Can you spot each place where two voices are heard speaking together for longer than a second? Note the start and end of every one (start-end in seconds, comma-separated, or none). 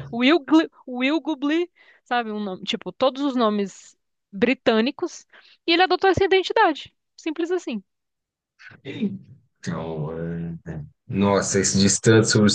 none